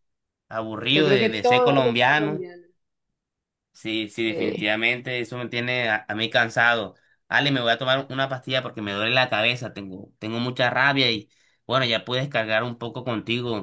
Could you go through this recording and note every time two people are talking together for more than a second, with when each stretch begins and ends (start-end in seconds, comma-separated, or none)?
0.9-2.4